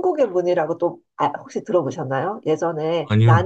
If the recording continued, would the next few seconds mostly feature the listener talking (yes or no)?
no